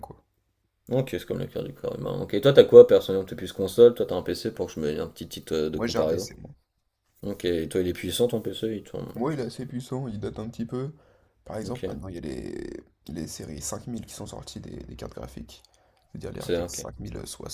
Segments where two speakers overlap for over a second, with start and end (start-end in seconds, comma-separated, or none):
none